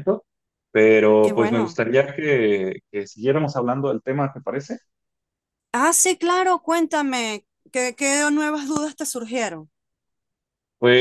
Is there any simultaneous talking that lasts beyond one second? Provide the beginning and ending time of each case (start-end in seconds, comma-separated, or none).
none